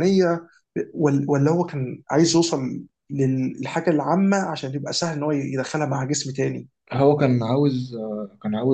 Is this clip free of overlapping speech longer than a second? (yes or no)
yes